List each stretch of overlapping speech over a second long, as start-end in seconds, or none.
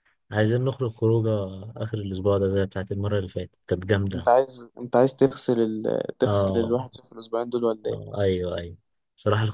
none